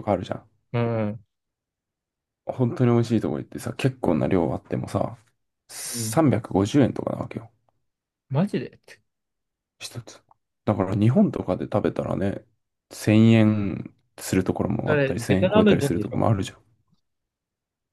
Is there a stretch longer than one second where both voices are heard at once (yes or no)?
yes